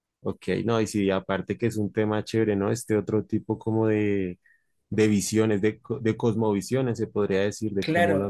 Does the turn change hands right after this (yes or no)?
yes